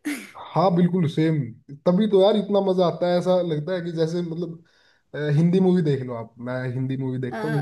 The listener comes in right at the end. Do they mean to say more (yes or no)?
no